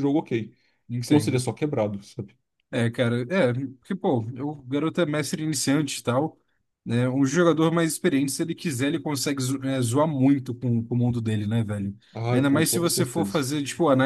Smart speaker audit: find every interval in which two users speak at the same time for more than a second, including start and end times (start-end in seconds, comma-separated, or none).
12.1-13.5